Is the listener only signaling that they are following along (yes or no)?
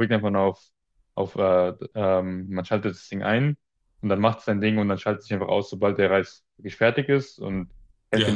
no